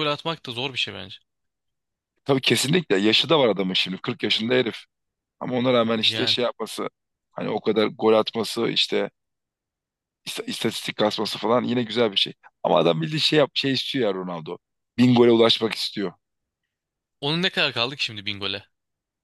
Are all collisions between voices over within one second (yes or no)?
yes